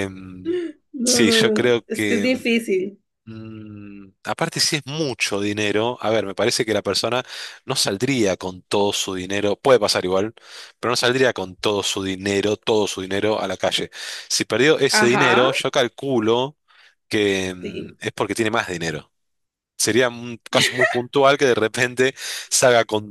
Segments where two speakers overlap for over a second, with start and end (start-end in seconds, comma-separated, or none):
1.0-2.3